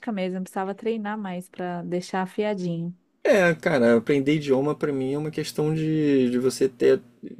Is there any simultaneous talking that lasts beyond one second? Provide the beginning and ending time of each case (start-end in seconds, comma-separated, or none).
none